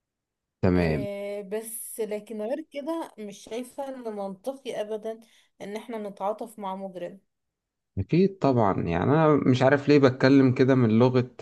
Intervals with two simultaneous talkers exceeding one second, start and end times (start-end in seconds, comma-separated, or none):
none